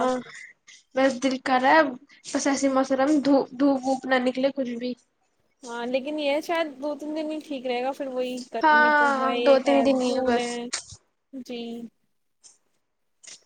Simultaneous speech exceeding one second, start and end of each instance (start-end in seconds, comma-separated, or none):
8.6-10.6